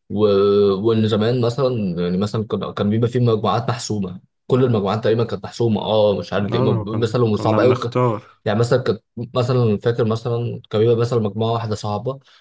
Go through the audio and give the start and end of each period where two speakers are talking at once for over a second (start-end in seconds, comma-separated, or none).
6.5-8.0